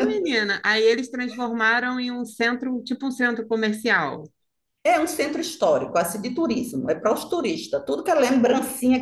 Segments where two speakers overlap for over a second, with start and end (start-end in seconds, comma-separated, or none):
none